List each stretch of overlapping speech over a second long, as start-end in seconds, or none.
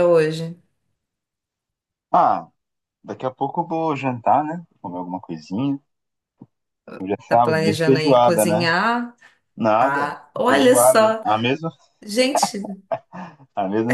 7.3-8.7, 9.8-11.2